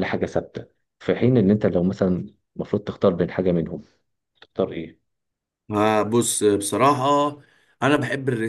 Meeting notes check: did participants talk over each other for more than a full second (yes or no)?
no